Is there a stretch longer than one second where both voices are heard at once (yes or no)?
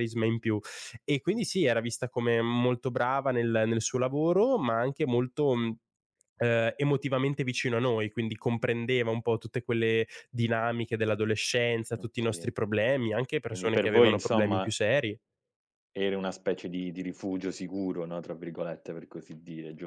yes